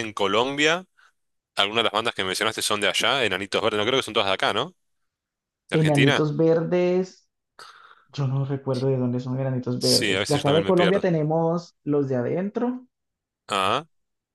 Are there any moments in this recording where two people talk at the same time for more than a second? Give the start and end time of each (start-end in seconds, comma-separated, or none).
9.8-11.1